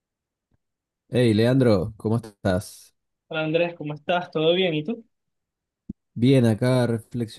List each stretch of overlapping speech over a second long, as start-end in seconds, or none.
none